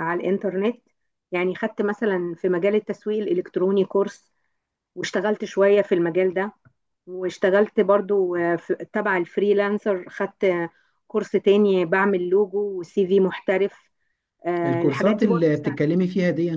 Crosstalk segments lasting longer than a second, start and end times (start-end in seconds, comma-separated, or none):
14.6-15.8